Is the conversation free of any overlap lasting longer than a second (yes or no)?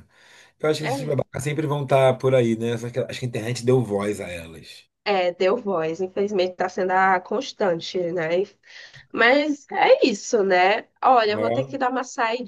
yes